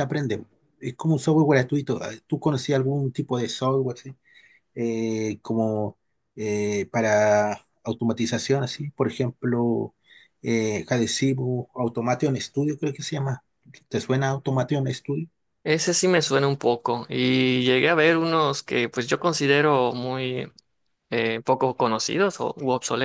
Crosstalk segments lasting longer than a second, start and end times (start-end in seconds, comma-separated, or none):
none